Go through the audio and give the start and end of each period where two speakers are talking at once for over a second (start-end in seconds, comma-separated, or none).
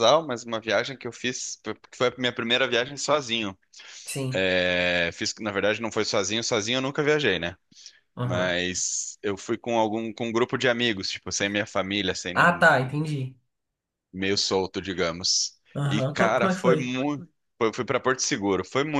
15.8-17.0